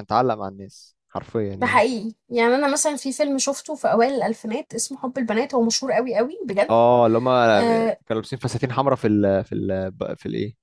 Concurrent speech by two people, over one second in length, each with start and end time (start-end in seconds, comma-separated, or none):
none